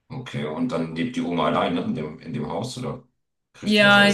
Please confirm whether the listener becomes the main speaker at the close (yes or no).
yes